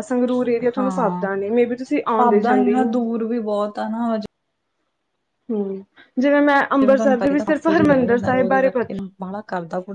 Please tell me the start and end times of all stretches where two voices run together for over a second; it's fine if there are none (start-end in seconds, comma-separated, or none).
6.7-9.0